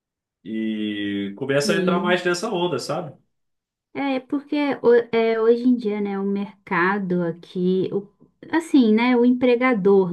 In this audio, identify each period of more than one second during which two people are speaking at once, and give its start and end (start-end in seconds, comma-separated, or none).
none